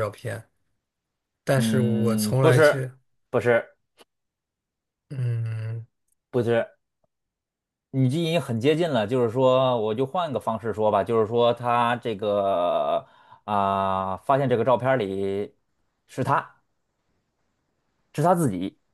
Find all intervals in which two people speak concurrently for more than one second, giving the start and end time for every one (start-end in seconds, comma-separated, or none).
1.6-2.9